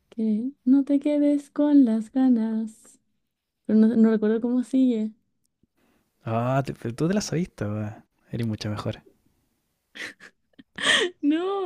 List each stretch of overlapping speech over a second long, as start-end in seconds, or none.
none